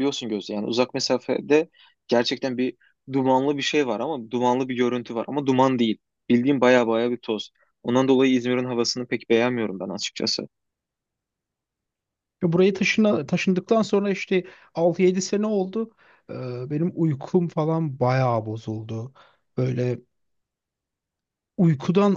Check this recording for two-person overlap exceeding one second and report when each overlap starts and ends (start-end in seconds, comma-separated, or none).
none